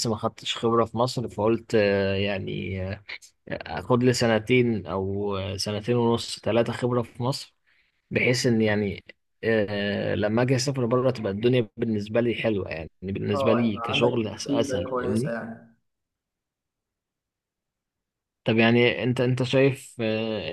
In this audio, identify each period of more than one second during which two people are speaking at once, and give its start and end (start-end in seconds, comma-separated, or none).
13.3-15.4